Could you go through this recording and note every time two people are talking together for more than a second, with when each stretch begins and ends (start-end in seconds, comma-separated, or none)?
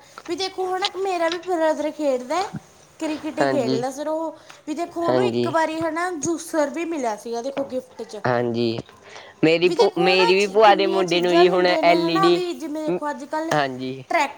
9.7-12.4